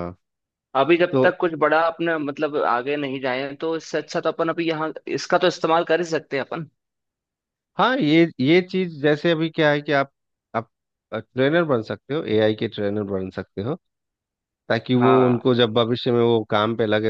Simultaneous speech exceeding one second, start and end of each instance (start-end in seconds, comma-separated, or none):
none